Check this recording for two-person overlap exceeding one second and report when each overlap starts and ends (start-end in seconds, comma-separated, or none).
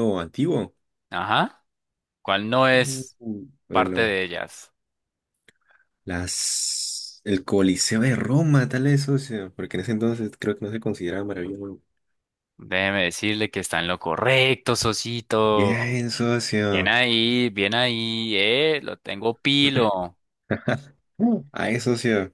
none